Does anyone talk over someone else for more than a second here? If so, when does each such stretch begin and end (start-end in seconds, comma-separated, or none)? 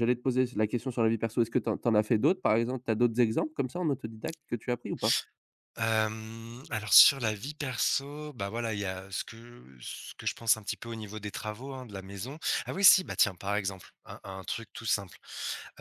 none